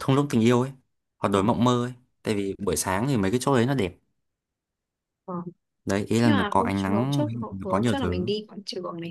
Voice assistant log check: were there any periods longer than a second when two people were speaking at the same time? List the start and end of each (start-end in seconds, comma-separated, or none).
6.2-8.3